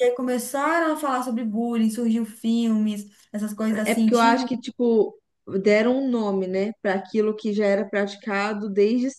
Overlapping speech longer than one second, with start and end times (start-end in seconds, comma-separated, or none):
none